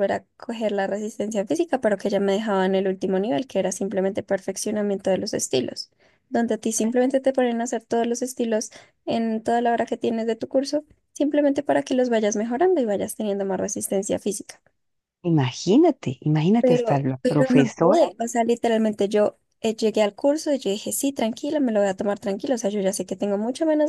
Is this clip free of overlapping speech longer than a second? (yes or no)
no